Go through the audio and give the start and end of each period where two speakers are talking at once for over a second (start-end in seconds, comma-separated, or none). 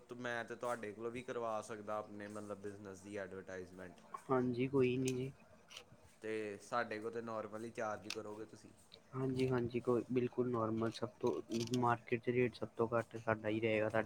none